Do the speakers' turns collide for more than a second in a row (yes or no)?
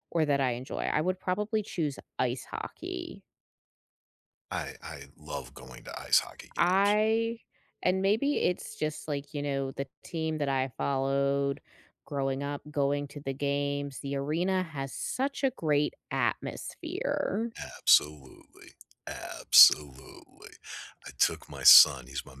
no